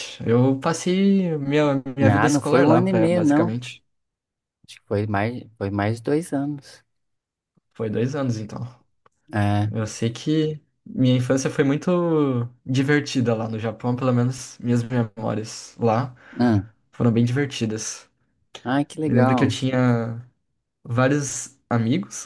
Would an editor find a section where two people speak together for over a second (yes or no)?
yes